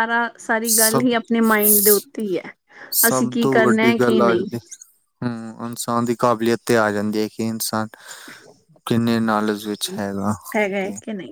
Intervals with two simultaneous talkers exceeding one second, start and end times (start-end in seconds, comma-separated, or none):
none